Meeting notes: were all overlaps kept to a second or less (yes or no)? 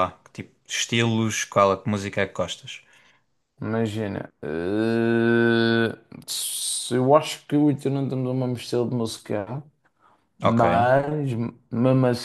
yes